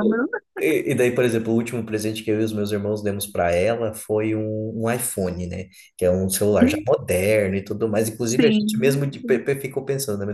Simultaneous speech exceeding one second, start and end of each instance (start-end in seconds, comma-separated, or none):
8.2-9.4